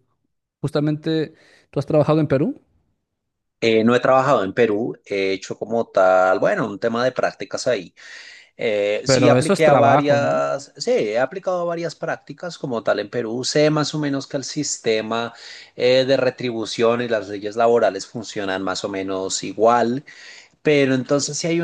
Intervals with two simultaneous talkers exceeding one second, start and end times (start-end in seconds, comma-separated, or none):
9.0-10.3